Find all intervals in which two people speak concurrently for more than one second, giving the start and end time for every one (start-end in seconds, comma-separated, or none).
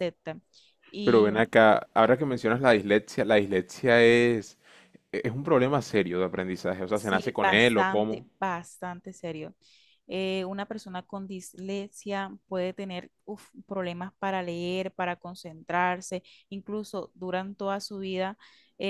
6.9-8.2